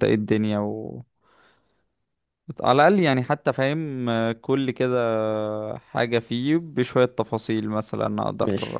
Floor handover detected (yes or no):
yes